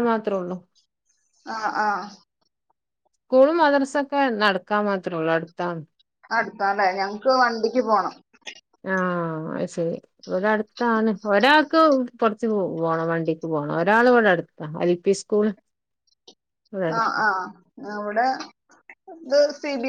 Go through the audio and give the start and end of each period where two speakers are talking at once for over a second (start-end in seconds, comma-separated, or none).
none